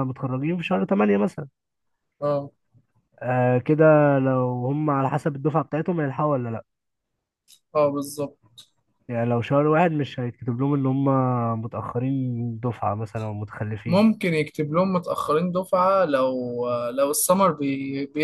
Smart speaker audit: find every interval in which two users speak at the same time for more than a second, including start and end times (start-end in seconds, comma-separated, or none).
none